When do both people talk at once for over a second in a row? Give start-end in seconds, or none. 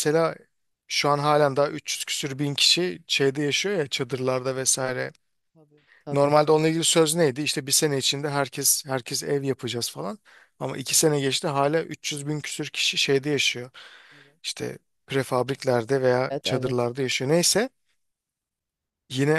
none